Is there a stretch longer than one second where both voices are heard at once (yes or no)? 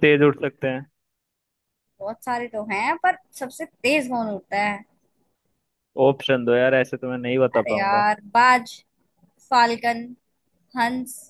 no